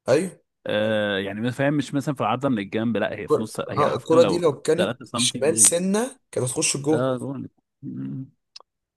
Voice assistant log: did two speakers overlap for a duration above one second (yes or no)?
yes